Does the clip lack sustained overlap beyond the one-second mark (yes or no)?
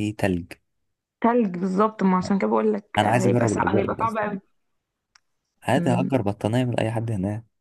no